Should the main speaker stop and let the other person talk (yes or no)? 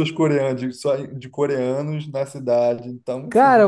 yes